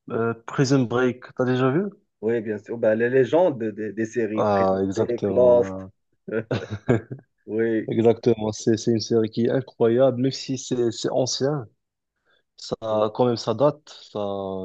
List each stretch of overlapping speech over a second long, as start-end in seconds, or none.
4.3-5.7